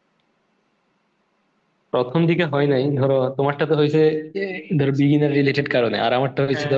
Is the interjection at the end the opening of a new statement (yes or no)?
no